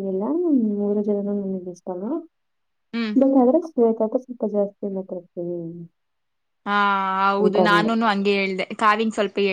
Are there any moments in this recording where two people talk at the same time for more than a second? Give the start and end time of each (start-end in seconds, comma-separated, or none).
none